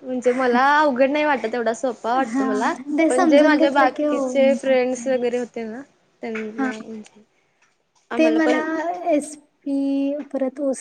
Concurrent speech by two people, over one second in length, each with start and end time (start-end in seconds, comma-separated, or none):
3.1-5.1